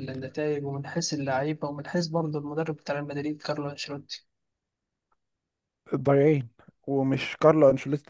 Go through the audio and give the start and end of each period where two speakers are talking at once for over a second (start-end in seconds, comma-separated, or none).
none